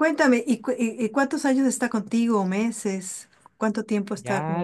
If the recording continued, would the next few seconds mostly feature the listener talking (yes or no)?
yes